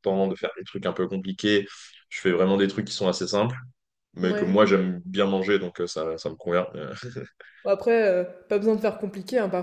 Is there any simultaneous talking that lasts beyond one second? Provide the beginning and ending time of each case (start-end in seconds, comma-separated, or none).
none